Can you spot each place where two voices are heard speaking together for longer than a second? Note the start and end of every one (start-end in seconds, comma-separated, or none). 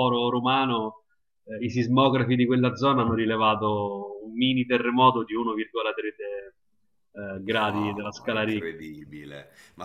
7.7-8.9